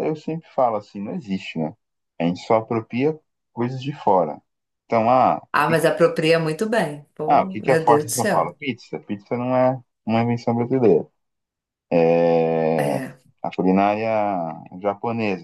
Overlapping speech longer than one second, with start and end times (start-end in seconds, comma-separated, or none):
7.3-8.5